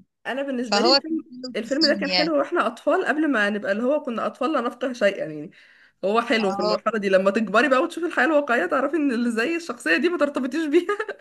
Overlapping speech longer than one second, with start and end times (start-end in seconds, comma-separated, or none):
0.7-2.3